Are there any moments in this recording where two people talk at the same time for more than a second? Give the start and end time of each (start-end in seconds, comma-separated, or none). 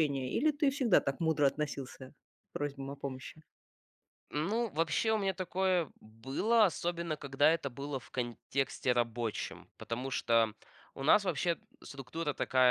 none